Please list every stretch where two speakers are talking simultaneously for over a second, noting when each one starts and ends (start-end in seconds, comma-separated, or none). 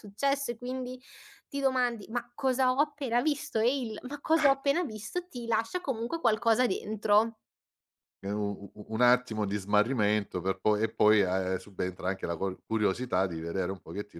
none